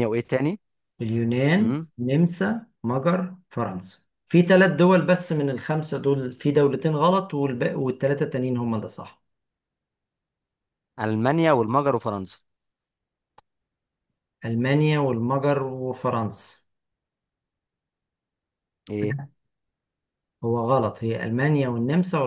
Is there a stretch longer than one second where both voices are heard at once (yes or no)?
no